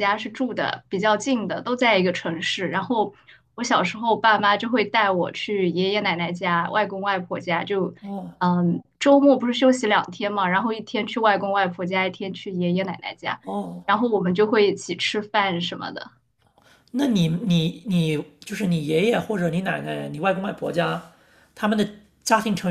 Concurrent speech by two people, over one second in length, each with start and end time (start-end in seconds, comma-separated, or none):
none